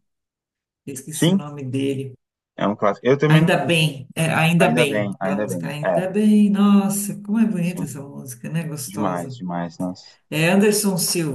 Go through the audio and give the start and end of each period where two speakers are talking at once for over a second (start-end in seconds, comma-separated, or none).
4.6-6.0